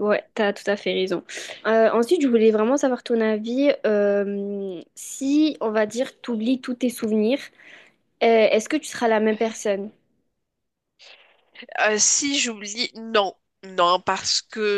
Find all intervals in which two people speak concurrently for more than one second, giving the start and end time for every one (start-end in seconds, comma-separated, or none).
none